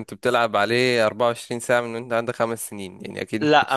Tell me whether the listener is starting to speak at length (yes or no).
yes